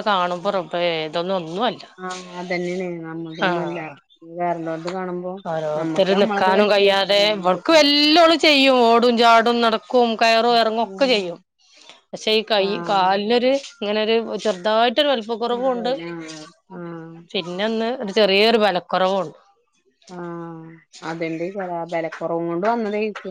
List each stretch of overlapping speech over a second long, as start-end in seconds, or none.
5.8-7.7